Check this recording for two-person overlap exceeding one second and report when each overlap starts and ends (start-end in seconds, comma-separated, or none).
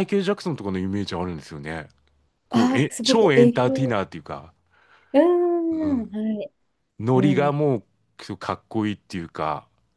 2.5-4.0